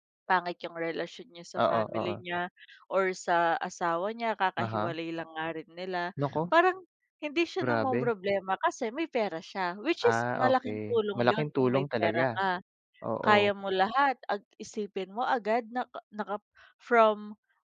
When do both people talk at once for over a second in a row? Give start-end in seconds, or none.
10.1-12.4